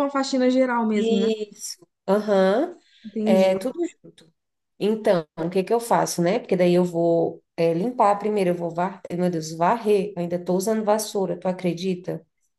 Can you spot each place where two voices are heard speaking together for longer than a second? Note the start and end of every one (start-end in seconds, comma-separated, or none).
none